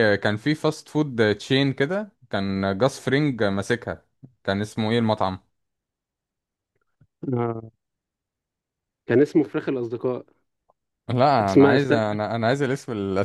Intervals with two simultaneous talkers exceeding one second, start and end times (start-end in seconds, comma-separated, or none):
none